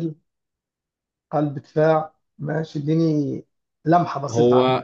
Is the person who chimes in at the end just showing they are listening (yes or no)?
no